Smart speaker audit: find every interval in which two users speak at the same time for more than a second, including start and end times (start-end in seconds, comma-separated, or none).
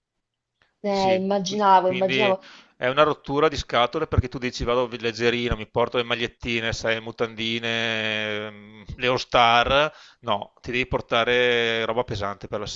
0.8-2.4